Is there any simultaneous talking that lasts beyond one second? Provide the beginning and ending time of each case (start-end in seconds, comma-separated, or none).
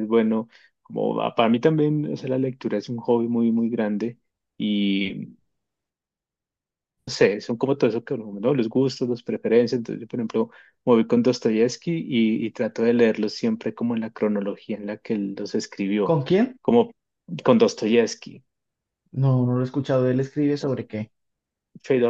none